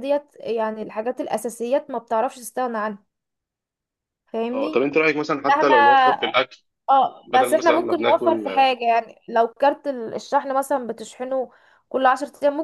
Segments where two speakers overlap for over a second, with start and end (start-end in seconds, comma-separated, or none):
7.2-8.7